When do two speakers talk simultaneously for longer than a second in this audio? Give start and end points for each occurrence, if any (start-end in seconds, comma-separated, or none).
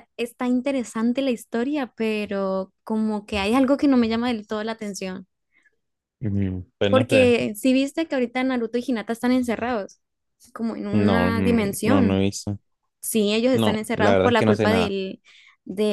10.9-12.2, 13.5-14.9